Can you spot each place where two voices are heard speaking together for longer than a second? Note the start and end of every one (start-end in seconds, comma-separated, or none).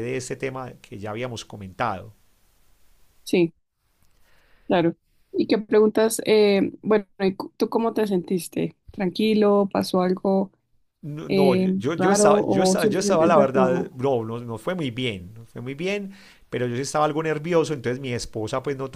11.3-13.9